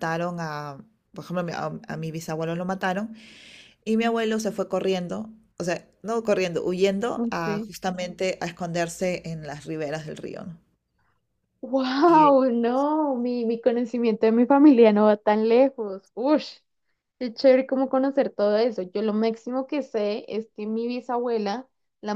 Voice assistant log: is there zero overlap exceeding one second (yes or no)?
yes